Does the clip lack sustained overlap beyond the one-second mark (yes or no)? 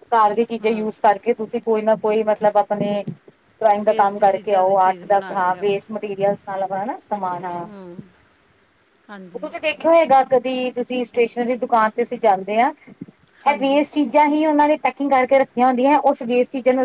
no